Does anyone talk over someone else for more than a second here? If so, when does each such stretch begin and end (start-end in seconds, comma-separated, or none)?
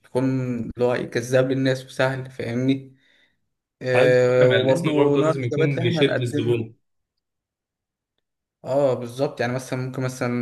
3.9-6.6